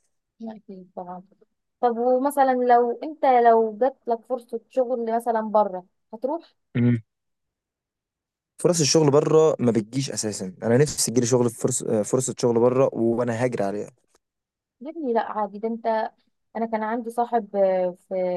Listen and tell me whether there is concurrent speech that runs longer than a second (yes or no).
no